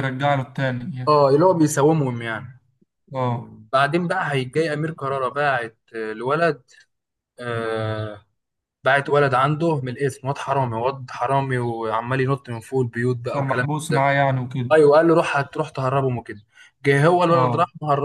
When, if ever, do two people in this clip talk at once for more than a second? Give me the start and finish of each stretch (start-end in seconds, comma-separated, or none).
none